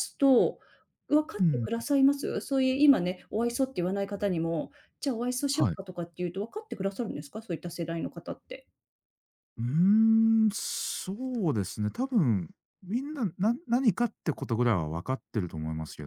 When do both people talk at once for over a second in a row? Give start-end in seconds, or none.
none